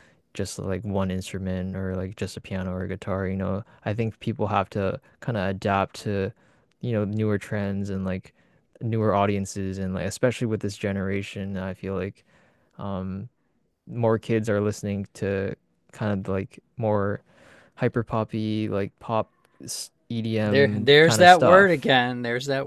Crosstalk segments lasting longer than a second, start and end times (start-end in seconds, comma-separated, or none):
20.4-21.9